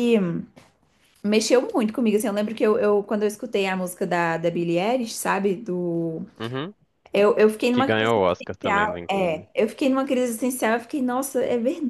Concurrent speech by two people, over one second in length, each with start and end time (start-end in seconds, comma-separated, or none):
7.7-9.5